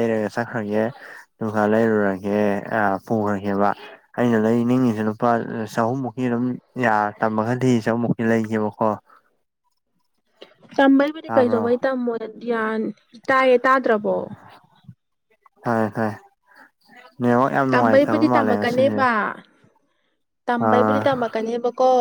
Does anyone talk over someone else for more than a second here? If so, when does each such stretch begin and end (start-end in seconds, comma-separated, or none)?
17.7-19.0